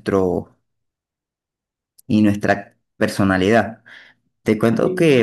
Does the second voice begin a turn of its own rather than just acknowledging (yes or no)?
no